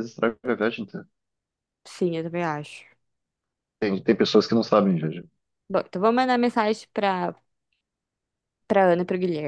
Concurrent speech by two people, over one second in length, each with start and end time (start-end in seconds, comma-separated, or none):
none